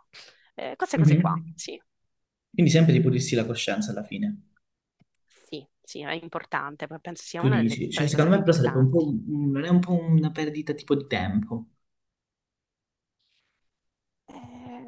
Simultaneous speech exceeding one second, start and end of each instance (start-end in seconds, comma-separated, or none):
7.3-9.1